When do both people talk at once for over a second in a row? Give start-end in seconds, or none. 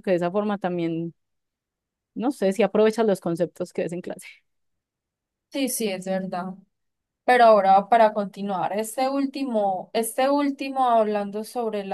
none